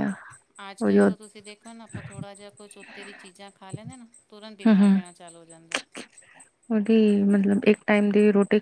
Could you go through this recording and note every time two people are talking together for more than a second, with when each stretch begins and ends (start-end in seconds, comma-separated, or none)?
none